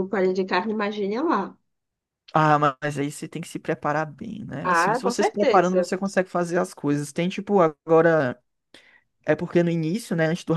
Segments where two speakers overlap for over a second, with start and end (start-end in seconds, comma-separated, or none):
4.6-5.9